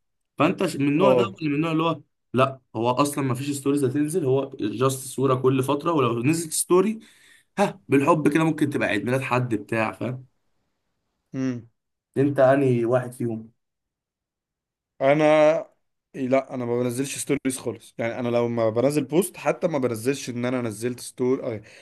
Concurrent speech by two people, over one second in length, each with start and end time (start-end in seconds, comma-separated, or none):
none